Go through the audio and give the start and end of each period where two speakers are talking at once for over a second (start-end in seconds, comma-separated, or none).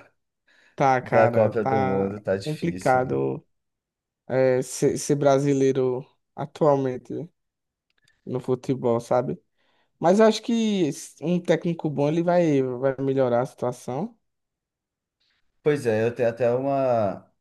1.0-3.2